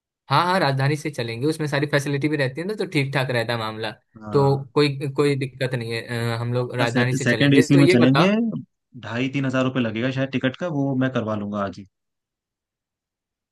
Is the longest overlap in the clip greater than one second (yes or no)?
yes